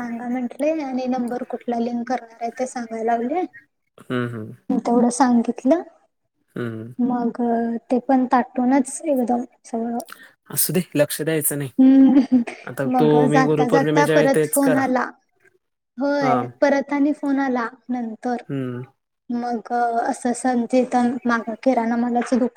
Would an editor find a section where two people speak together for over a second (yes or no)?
yes